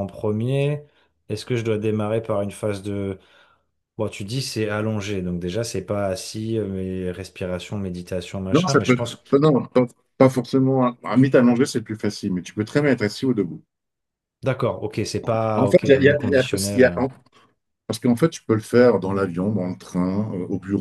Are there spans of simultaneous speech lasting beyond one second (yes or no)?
yes